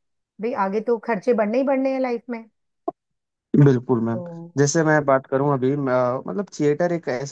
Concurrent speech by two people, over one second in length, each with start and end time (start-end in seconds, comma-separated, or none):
none